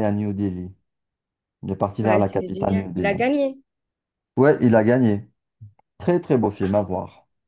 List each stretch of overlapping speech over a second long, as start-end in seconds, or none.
2.0-3.2